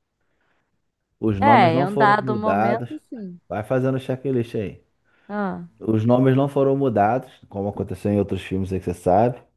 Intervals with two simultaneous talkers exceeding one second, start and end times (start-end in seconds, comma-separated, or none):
1.4-2.9